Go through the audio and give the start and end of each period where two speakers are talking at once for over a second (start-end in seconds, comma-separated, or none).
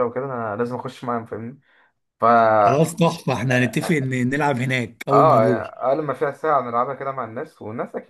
none